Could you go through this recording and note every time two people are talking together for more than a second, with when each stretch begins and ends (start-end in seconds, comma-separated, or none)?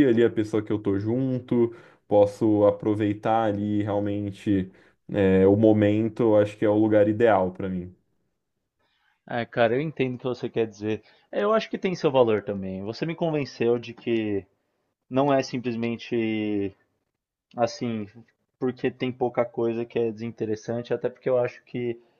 none